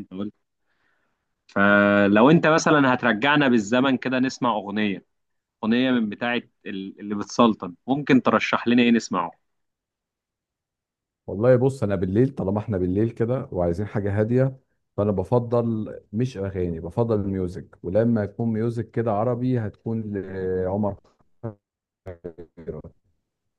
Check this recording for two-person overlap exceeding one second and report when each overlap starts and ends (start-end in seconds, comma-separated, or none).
none